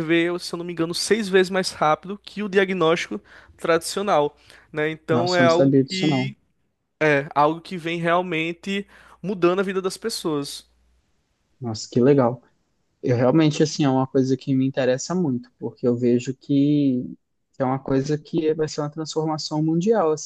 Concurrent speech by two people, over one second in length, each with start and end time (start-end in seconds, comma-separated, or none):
5.1-6.3